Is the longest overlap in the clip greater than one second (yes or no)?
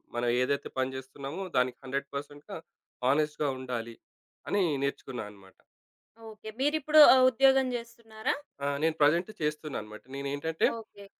no